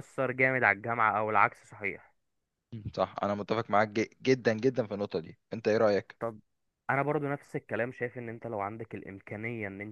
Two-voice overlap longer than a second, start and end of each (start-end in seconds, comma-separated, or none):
none